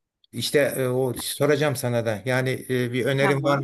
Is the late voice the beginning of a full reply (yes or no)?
no